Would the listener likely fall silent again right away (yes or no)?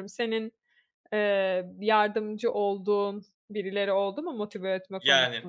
no